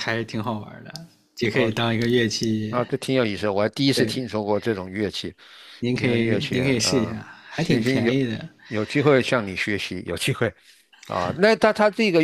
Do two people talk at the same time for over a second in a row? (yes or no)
yes